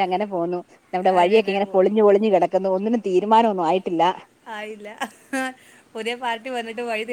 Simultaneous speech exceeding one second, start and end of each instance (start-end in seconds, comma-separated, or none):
none